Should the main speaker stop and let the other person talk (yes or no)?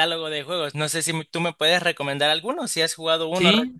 yes